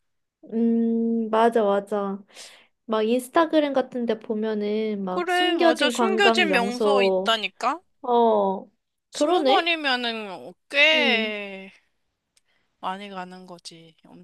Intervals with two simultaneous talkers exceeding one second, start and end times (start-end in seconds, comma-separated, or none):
5.1-7.4